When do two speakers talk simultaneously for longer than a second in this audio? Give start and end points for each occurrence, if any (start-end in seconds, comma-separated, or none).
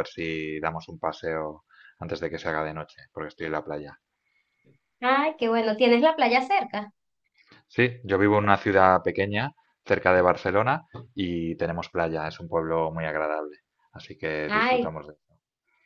none